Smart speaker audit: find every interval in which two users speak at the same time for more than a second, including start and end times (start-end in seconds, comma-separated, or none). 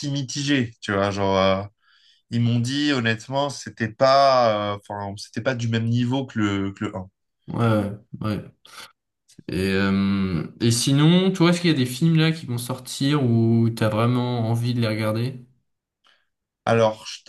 none